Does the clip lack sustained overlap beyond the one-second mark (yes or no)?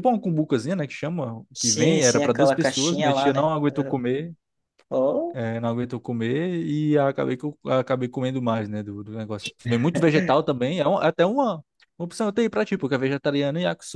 no